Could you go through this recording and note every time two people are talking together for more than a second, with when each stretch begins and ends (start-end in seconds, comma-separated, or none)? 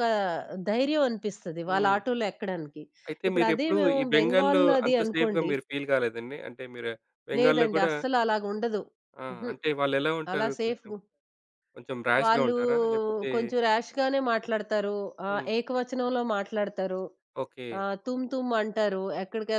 3.3-5.5